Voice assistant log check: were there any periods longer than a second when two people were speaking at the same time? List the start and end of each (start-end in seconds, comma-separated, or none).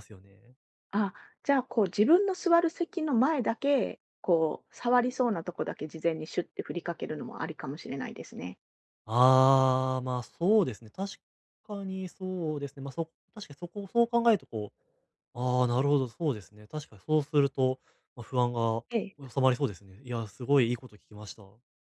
none